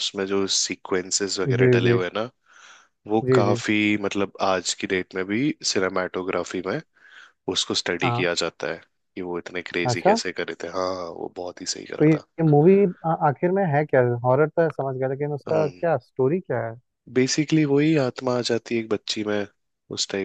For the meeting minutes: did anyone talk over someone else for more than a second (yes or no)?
no